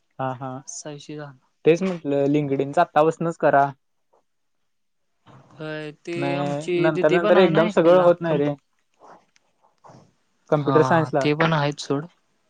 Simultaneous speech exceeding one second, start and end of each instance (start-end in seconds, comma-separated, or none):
6.2-8.4